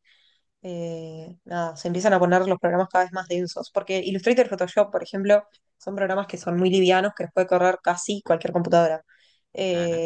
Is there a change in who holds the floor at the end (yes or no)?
no